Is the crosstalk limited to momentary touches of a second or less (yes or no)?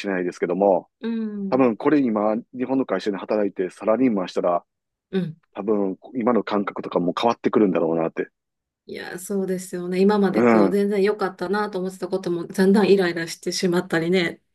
yes